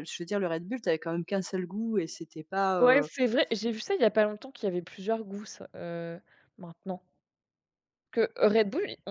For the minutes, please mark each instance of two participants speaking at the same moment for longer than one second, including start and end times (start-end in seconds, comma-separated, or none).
none